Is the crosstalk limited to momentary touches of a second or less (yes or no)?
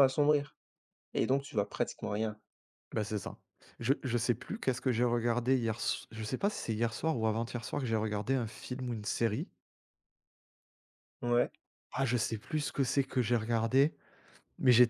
yes